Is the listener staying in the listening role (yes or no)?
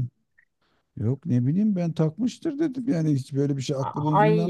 no